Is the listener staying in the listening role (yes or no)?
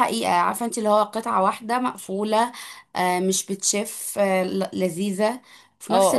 no